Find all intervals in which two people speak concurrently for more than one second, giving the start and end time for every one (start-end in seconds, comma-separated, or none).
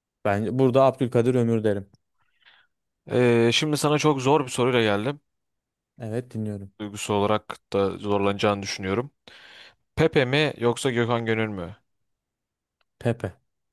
none